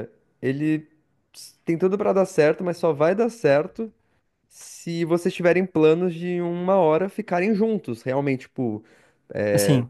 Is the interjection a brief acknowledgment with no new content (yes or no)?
yes